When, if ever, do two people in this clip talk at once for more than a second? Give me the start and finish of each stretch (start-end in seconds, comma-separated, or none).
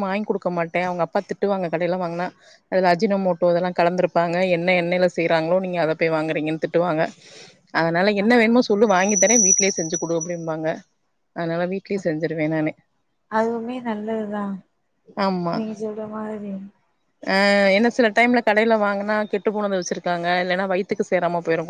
none